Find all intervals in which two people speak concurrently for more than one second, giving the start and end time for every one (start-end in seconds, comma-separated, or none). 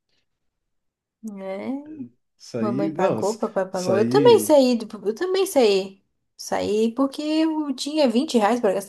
2.6-4.6